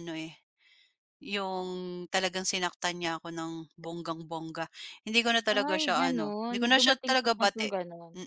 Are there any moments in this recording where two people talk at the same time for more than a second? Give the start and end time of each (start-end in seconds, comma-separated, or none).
5.7-7.7